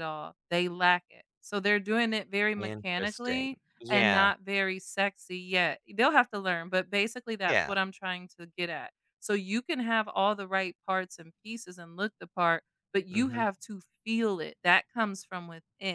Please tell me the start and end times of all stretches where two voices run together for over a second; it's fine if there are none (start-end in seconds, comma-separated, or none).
2.6-4.3